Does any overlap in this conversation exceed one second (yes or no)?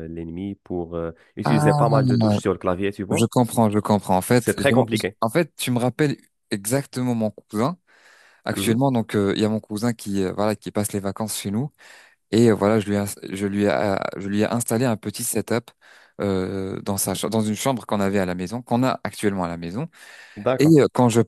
no